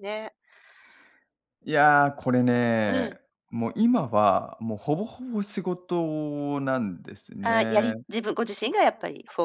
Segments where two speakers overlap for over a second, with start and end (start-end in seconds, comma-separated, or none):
none